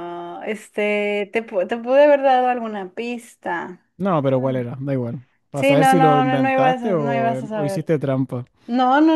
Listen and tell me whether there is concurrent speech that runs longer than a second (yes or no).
yes